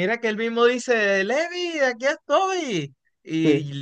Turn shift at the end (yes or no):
no